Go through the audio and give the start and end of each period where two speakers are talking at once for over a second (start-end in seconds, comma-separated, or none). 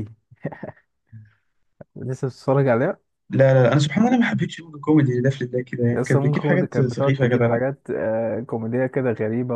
5.9-7.6